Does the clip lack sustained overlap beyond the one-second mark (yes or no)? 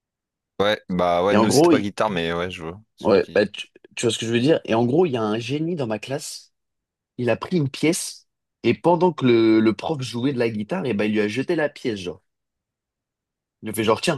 yes